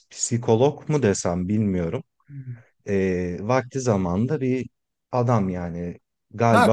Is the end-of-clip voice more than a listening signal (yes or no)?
yes